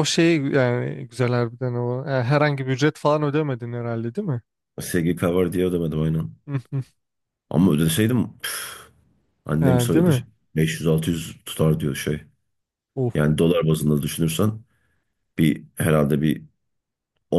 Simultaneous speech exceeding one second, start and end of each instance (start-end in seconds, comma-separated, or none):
none